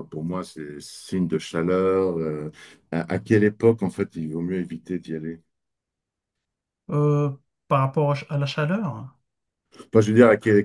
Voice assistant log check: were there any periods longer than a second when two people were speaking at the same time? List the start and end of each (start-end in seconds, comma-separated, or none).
none